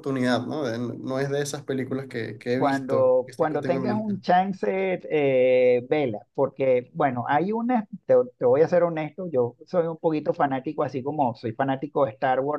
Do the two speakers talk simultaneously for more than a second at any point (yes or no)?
yes